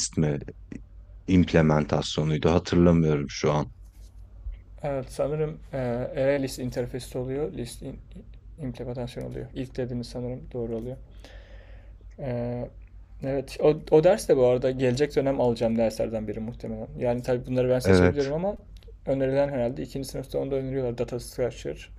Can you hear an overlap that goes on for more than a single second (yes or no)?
no